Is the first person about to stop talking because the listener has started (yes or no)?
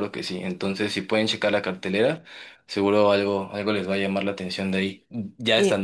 yes